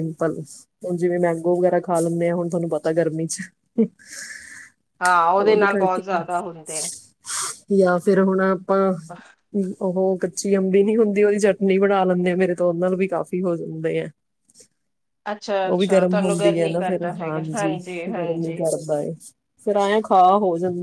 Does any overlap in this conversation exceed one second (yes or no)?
yes